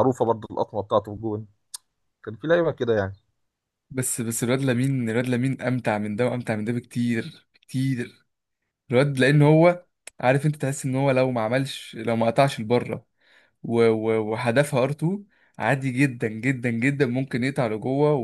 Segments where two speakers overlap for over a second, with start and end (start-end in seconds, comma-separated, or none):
none